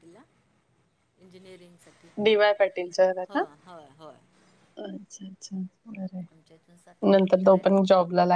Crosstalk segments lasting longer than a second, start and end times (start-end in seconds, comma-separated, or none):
none